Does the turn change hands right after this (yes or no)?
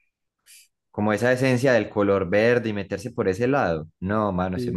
no